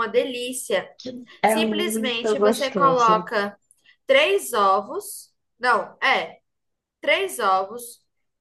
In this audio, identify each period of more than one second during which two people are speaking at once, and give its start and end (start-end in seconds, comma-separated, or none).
1.5-3.3